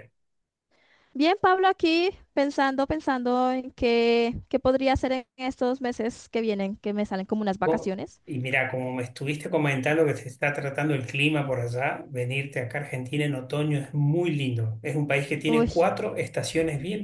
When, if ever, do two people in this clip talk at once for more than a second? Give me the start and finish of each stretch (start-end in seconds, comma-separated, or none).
none